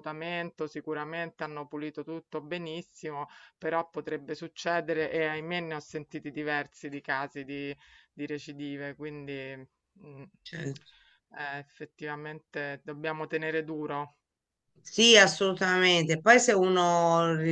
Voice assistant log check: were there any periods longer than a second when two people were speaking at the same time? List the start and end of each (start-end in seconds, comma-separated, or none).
none